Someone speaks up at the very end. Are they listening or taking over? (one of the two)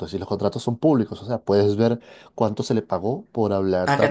listening